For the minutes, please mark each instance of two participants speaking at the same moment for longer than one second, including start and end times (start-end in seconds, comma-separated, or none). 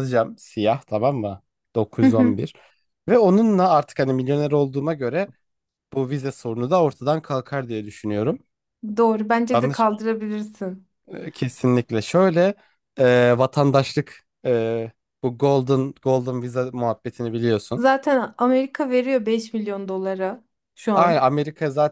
none